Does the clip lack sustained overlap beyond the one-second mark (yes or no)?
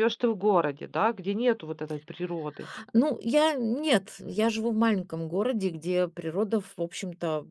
yes